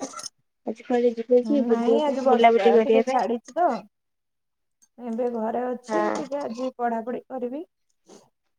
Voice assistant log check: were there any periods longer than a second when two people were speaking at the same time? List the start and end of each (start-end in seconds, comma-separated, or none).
1.7-3.2